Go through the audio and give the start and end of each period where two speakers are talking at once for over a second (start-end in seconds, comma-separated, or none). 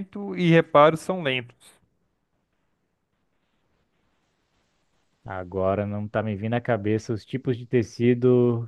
none